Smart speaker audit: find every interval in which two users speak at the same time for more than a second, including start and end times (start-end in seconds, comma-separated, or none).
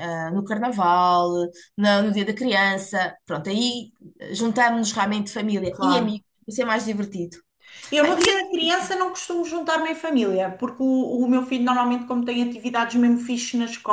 none